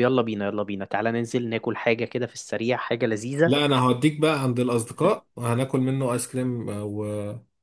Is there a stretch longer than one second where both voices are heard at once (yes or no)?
no